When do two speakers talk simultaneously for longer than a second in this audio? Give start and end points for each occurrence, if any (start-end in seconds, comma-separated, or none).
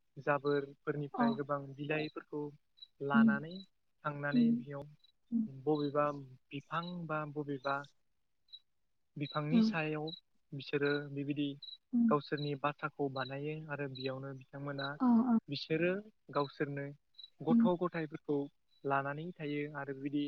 none